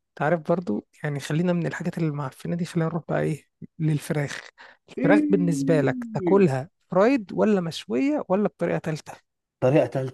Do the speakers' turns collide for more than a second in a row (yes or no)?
yes